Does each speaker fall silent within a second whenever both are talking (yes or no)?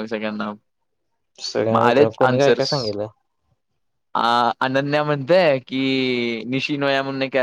no